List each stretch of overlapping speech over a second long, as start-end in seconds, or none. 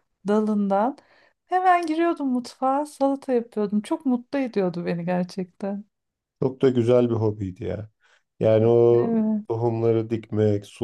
none